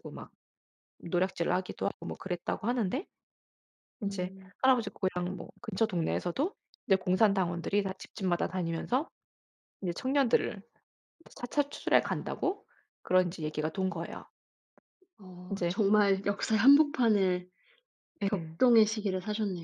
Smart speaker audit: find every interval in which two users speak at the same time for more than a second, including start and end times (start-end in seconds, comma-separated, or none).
none